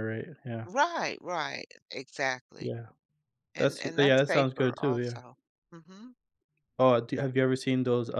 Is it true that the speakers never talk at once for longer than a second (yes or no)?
no